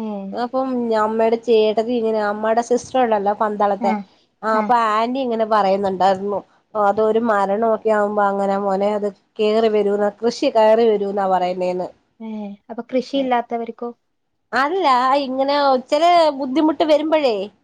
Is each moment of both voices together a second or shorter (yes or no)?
yes